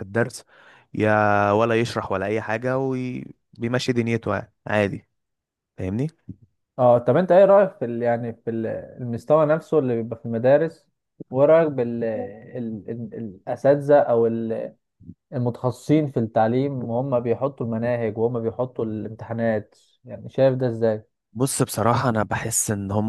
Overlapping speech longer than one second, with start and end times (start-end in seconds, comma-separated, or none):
none